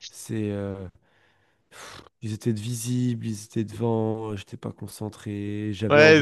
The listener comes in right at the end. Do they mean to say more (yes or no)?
yes